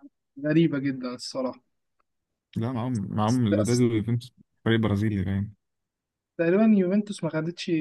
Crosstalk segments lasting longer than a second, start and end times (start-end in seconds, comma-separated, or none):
none